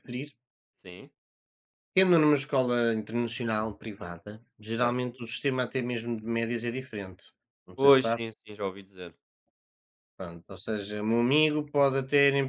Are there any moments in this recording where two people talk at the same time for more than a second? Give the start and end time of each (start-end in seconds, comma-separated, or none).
none